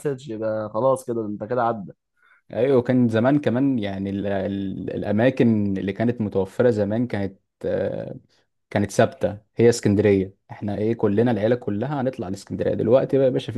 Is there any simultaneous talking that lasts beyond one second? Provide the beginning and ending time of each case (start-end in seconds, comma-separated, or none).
none